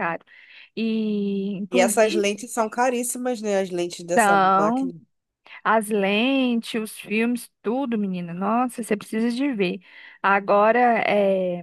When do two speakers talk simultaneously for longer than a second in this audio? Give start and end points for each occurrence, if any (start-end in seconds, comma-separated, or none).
none